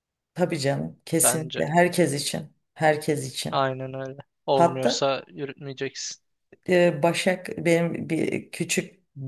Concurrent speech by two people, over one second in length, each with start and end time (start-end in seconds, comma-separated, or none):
none